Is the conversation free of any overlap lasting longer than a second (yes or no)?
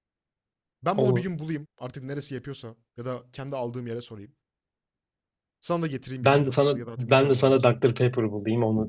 no